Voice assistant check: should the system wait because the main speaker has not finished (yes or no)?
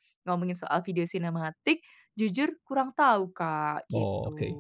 no